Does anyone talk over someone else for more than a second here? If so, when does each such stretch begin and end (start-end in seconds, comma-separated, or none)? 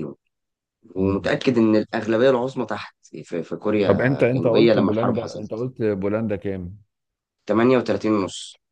3.8-5.7